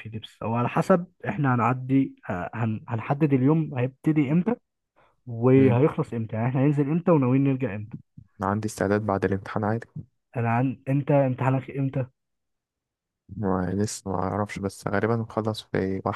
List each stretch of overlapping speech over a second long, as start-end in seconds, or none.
none